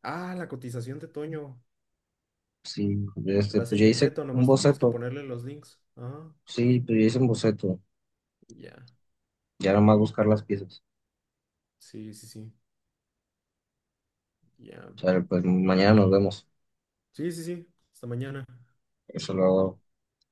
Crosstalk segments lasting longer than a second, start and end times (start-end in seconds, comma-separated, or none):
3.5-5.0